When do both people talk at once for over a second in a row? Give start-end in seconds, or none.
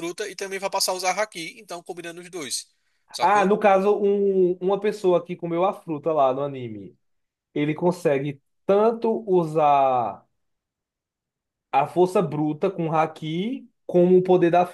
none